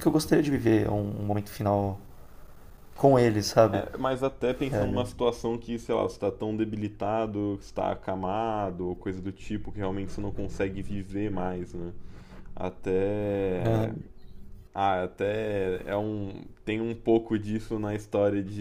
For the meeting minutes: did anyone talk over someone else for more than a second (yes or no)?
no